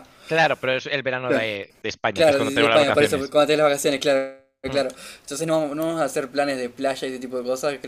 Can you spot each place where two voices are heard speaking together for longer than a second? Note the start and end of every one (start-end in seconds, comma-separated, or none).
2.1-3.4